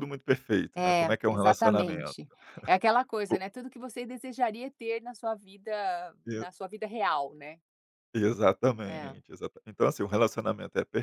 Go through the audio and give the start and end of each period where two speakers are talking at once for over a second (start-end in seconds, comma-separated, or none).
0.8-2.1